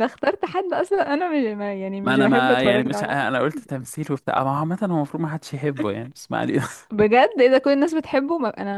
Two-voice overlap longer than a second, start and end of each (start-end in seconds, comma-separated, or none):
2.0-3.7